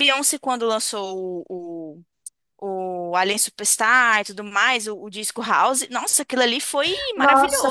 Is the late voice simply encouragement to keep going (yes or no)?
no